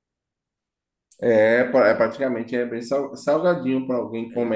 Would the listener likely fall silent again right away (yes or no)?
yes